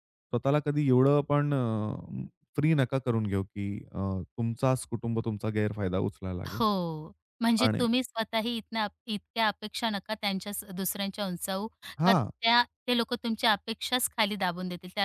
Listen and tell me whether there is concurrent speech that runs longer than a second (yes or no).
no